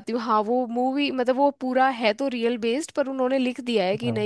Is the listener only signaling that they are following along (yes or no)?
yes